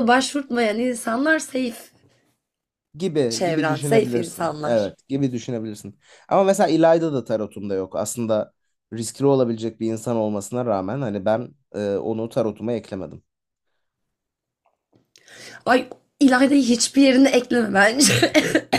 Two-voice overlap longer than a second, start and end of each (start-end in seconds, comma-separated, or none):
3.3-4.9